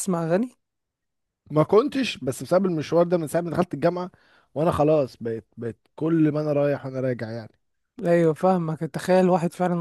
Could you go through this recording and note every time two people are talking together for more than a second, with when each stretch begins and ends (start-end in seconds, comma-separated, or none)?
none